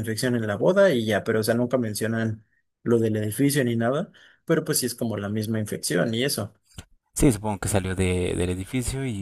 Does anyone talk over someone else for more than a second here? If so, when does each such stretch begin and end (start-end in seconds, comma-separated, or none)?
none